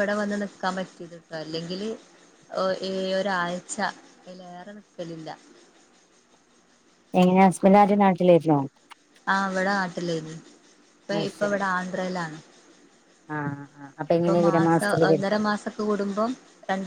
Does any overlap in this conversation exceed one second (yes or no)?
no